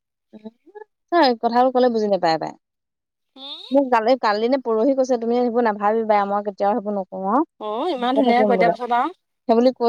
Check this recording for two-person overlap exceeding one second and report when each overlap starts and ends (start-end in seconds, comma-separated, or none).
none